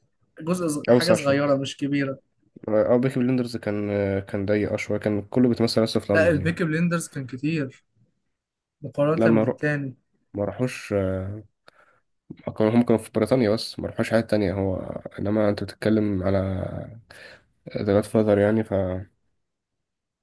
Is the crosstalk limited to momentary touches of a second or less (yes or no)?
yes